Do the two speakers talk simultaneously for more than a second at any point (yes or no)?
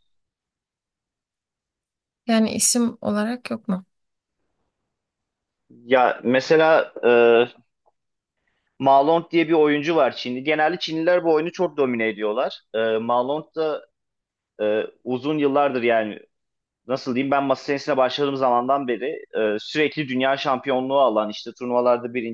no